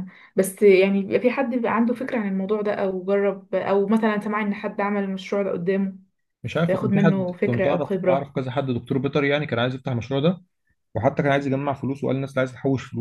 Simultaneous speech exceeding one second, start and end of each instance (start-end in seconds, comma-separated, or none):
6.7-8.3